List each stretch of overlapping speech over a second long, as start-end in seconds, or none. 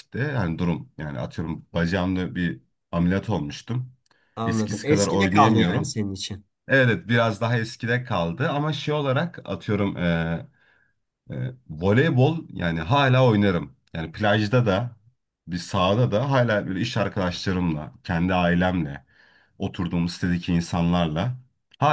4.5-6.0